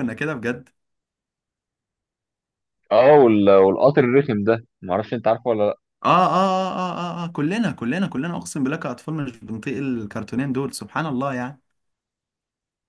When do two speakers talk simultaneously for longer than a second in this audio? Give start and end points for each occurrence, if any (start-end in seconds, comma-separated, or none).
none